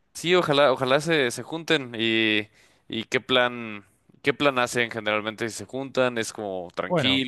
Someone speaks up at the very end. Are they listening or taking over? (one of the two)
taking over